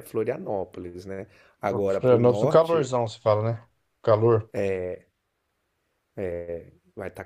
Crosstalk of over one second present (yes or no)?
yes